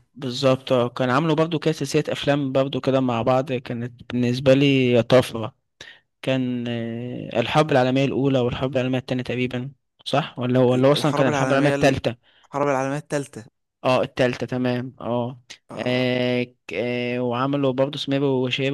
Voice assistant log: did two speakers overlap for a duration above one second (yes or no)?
yes